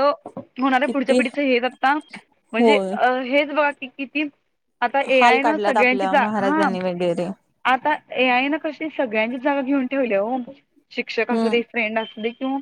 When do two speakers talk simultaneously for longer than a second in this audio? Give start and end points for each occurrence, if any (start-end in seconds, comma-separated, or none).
5.2-6.7